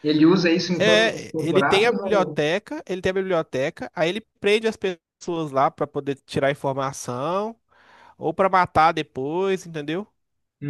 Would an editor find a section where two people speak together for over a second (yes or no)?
yes